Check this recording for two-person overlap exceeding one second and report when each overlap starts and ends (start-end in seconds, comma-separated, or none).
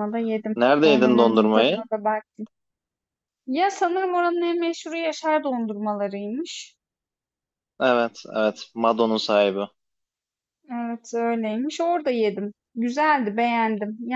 0.6-1.8